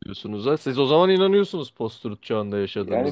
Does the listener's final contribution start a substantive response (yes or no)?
yes